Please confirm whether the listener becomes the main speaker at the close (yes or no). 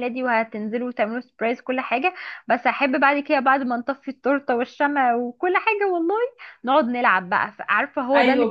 yes